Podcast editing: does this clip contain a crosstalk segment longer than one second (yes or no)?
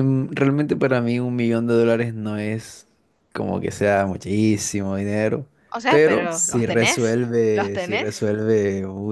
yes